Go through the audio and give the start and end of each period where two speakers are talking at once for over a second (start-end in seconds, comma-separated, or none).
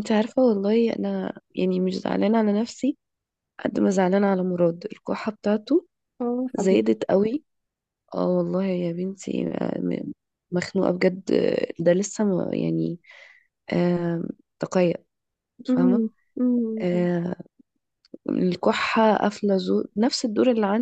none